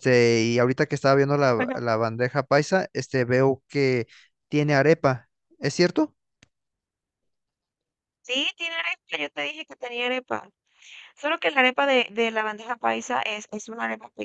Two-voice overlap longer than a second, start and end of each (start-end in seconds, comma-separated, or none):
none